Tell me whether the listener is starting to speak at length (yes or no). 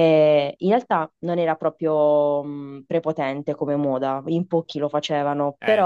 no